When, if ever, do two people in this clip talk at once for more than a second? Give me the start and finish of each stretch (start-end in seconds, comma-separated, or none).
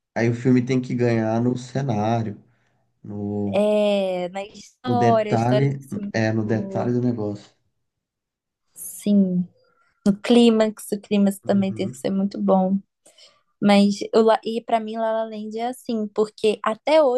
4.8-6.9